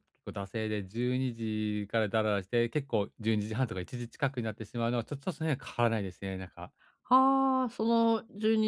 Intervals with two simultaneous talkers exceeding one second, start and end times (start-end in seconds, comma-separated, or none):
none